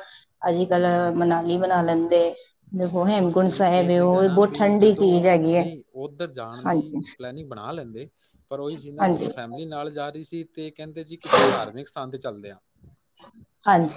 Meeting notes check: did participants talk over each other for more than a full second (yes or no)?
yes